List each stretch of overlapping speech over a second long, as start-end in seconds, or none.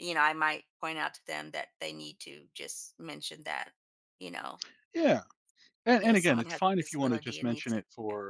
6.0-7.8